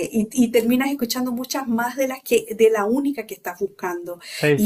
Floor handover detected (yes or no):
no